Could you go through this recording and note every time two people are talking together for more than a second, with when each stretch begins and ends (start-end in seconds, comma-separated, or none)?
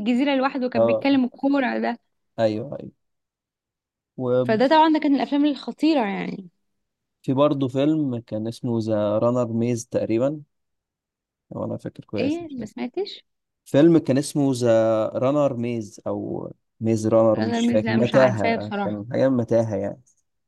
17.3-19.0